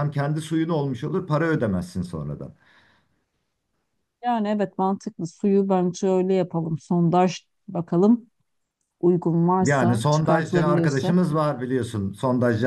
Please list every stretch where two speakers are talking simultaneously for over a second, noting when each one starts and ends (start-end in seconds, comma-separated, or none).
9.6-11.2